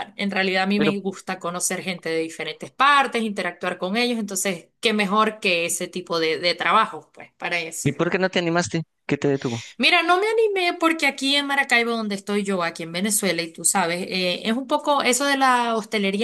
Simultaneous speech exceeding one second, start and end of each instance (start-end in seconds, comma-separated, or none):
none